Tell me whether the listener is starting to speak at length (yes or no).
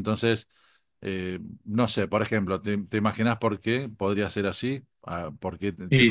yes